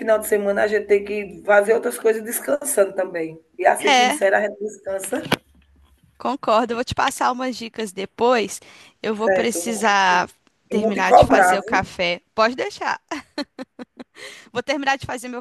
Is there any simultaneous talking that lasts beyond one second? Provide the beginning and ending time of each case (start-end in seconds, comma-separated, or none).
10.7-11.9